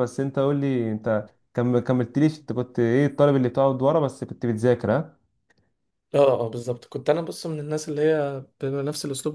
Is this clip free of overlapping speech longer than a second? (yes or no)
yes